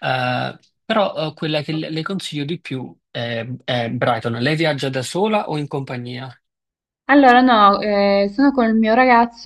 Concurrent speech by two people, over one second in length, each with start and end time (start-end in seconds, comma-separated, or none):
none